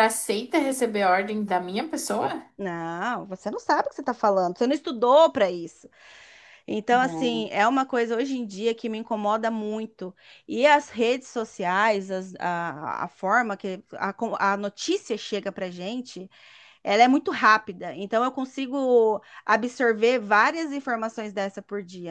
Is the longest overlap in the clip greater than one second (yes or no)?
no